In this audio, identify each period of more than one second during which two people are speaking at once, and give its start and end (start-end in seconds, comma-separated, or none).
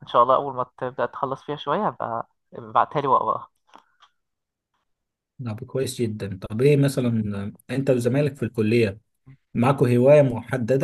none